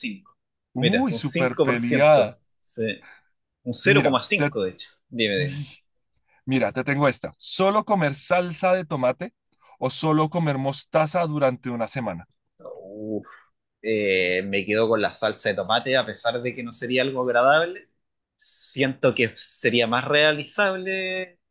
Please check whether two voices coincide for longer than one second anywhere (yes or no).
yes